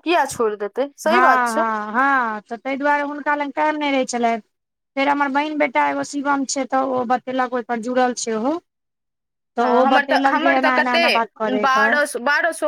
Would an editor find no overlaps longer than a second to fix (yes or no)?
no